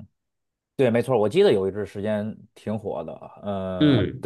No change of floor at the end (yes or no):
yes